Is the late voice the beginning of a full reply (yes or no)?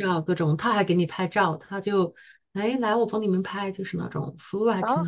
yes